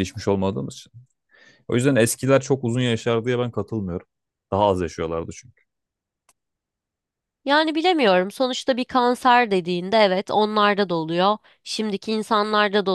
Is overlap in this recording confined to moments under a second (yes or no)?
yes